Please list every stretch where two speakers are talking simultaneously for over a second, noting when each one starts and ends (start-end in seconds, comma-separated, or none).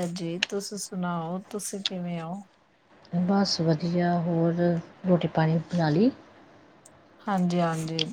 none